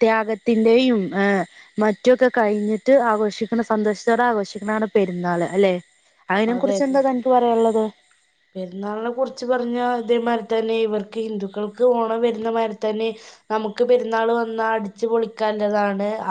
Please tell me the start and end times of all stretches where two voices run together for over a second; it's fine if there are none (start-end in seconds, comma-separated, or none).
none